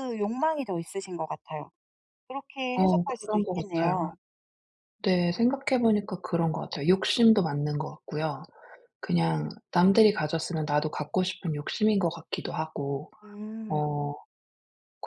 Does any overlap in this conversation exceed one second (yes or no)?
yes